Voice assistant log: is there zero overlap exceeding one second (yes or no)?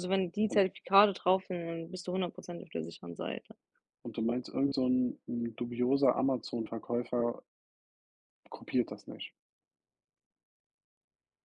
yes